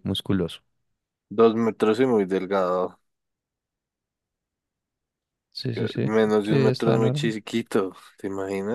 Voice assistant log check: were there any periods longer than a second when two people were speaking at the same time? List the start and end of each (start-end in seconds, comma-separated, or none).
5.7-7.4